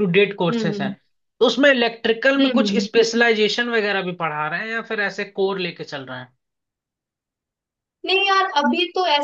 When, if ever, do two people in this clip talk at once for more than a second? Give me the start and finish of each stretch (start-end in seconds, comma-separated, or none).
none